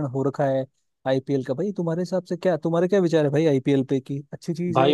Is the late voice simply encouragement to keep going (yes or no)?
no